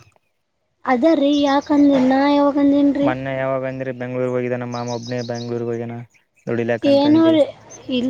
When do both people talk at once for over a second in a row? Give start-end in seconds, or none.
none